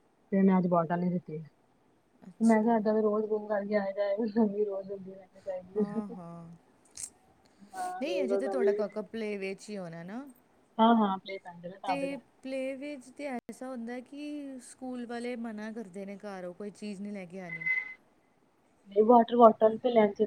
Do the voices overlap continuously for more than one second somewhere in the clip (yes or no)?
no